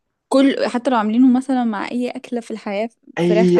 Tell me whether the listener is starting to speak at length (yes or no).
yes